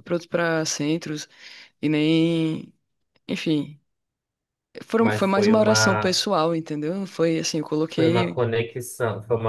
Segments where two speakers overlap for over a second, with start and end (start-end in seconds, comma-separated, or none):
5.0-6.2